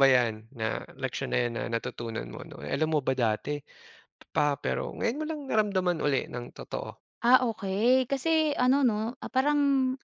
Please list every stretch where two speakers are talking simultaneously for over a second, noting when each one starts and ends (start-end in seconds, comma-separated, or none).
none